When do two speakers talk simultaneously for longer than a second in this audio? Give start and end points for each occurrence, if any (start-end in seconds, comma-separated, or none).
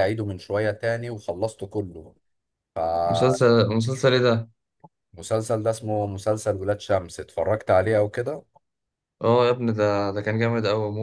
none